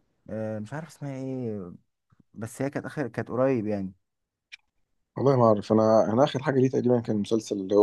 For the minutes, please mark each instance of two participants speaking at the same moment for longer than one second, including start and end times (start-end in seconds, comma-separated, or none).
none